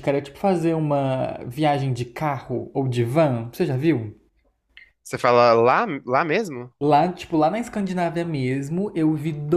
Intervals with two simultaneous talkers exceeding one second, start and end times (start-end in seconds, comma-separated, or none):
none